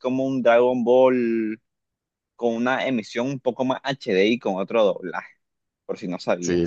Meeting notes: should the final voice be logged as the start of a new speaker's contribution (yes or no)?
yes